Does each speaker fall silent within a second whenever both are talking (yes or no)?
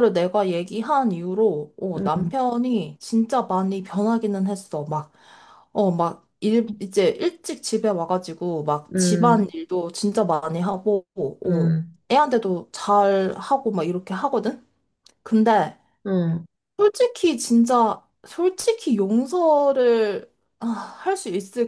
yes